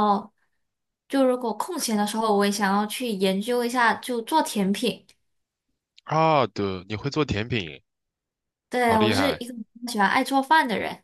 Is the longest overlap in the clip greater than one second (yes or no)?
no